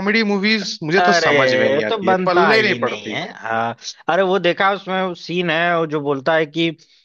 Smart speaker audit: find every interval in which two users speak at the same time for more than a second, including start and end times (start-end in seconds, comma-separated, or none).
1.0-3.2